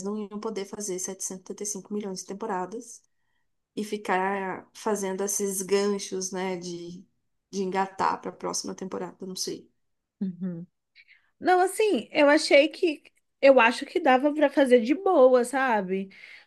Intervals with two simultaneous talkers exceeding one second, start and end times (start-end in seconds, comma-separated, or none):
none